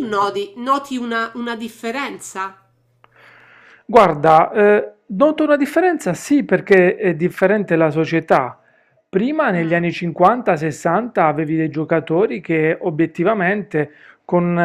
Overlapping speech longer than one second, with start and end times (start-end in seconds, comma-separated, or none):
none